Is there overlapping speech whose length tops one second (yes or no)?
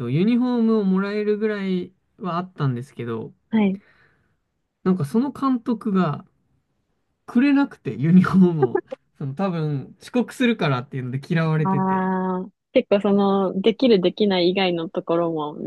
no